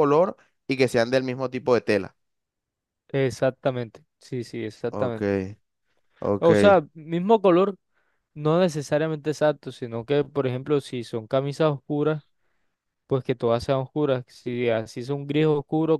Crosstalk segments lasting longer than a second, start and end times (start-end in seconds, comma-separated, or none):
none